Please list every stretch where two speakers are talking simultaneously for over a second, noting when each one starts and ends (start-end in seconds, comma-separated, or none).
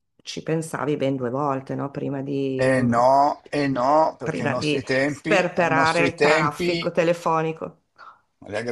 4.2-6.9